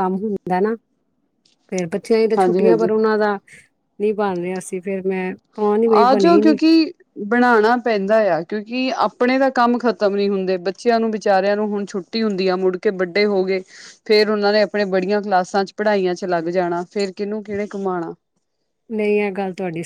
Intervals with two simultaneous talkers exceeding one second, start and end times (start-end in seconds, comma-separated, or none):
none